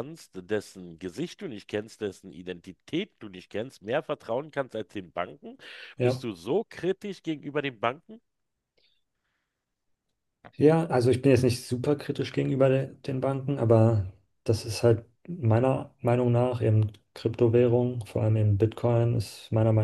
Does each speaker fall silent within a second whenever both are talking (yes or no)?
yes